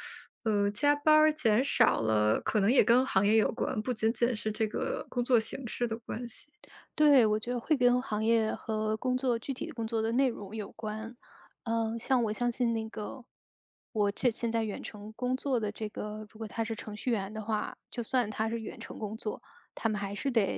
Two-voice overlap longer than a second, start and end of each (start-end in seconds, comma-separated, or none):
none